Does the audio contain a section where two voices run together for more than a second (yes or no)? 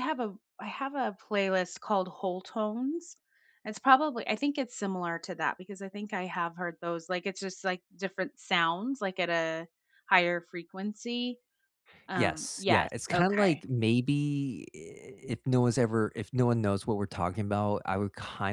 yes